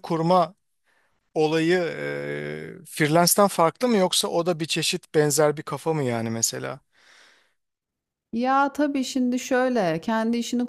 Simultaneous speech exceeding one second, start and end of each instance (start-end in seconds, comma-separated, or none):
none